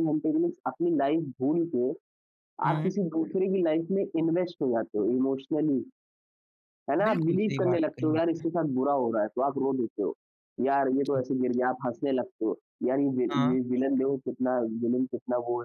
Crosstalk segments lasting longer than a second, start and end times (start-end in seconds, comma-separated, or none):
7.1-8.4